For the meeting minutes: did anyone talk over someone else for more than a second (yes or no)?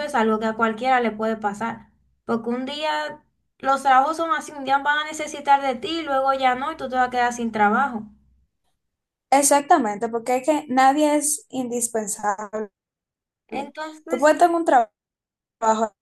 no